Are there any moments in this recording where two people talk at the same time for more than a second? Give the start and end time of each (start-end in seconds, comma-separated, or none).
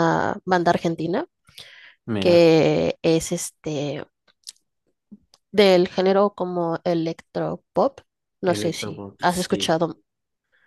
8.4-9.8